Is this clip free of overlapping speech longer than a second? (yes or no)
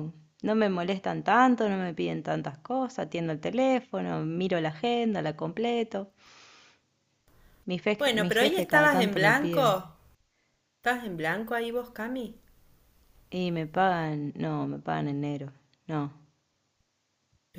no